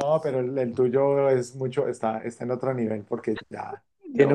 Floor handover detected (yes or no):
no